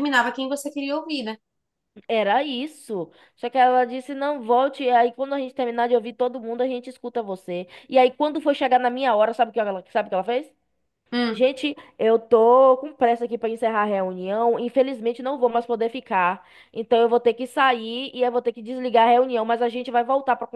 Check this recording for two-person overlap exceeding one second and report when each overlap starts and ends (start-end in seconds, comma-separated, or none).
none